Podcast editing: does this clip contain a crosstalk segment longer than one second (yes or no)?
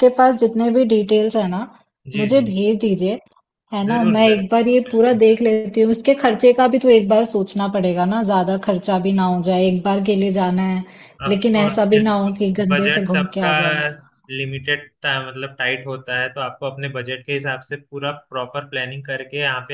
yes